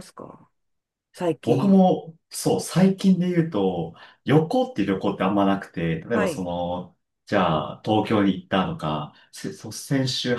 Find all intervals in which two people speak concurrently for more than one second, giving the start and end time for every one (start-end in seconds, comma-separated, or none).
none